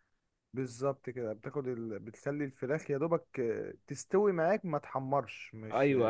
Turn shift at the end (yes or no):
yes